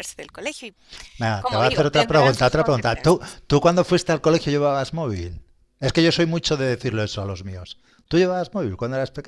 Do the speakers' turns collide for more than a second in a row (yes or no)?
yes